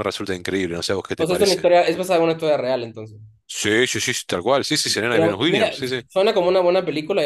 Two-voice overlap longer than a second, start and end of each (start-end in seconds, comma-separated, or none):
none